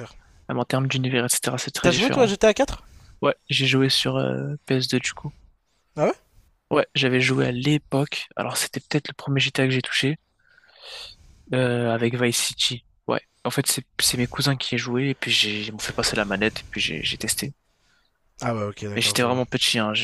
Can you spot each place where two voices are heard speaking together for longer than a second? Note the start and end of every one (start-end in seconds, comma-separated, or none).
none